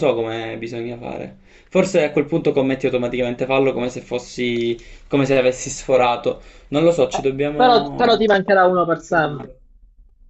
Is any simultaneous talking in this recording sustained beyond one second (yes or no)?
yes